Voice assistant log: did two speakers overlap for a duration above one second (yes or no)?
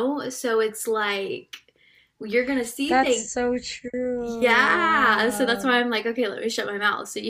yes